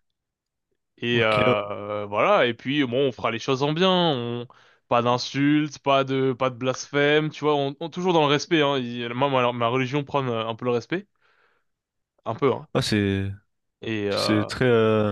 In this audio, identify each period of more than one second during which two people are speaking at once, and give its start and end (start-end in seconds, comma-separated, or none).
none